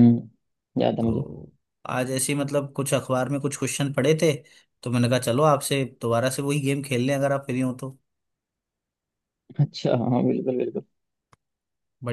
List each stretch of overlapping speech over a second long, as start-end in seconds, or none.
none